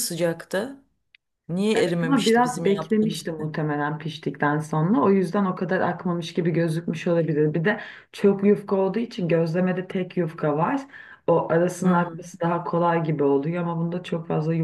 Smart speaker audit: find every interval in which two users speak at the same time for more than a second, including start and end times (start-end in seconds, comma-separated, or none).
1.7-3.5